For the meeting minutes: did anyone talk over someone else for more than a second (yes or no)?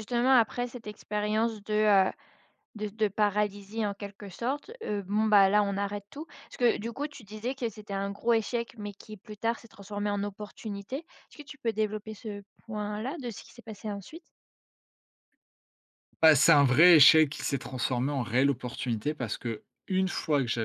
no